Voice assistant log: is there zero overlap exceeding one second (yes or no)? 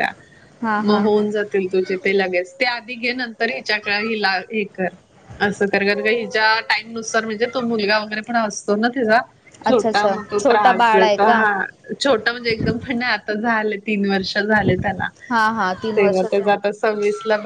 no